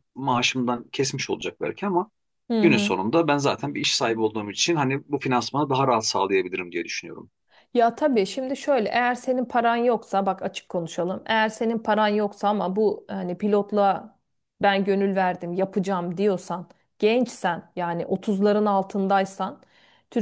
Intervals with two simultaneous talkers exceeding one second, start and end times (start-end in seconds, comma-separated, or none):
none